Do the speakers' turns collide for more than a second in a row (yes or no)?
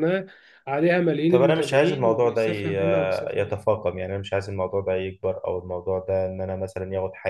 yes